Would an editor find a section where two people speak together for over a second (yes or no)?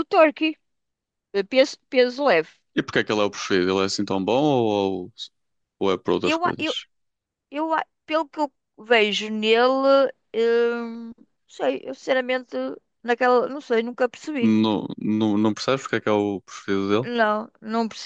no